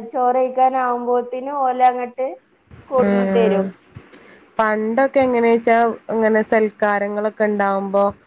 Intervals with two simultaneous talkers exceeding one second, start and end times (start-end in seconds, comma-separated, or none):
none